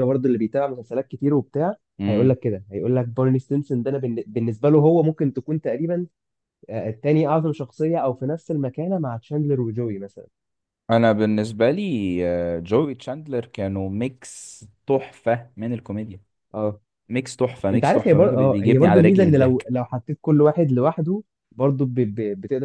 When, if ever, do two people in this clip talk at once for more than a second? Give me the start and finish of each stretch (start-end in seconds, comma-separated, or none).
17.7-19.7